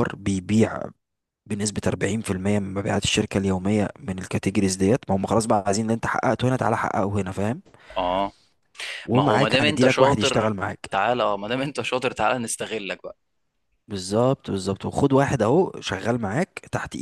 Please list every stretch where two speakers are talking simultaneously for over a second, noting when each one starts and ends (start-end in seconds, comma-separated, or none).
9.1-10.9